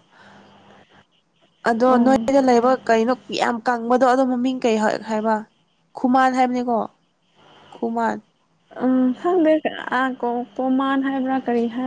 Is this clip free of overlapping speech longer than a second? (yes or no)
yes